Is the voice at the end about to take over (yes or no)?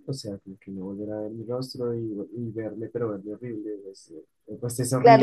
yes